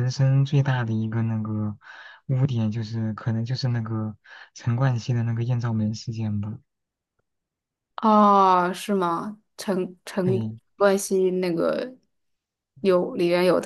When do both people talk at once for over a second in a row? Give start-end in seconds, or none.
none